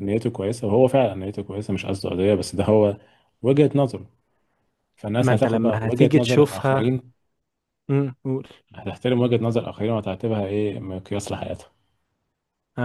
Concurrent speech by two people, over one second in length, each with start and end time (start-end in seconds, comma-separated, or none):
5.2-7.0